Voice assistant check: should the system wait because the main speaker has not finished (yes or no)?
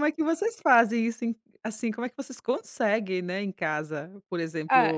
yes